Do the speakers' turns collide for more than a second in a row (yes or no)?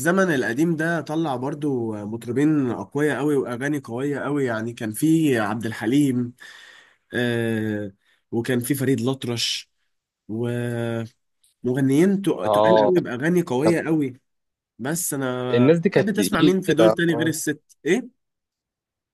yes